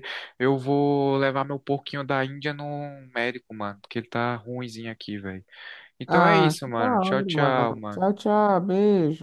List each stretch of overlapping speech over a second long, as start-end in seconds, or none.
6.1-8.2